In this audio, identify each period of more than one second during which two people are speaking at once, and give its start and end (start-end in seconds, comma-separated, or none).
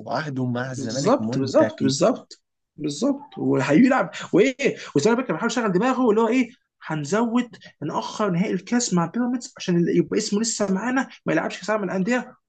0.7-1.9